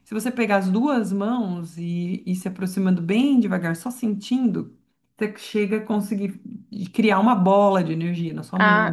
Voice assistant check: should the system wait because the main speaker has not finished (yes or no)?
no